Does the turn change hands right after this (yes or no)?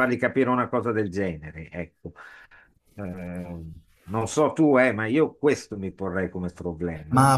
yes